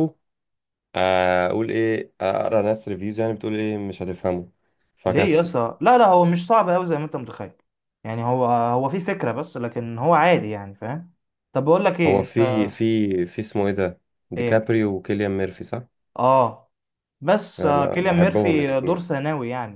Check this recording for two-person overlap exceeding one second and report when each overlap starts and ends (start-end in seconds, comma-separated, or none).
17.6-19.1